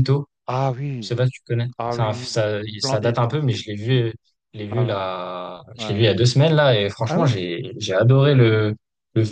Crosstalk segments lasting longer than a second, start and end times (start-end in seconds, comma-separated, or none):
1.8-3.6